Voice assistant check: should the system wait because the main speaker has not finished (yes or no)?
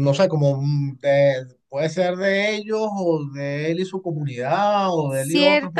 no